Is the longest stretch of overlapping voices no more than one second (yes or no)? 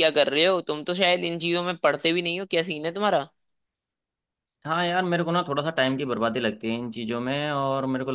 yes